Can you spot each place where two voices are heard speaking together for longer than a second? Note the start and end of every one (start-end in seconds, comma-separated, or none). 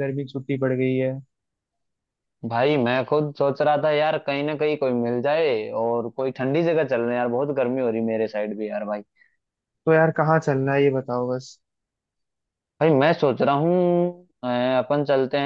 none